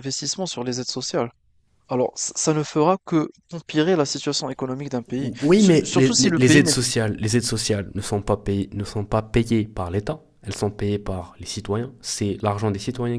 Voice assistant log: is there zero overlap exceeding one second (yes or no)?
no